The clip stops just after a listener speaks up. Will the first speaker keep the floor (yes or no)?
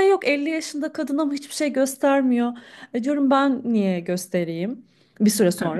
no